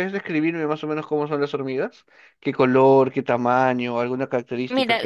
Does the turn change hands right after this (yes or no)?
yes